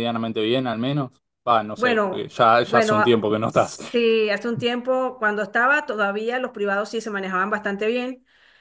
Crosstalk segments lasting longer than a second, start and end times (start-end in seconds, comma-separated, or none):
1.8-3.8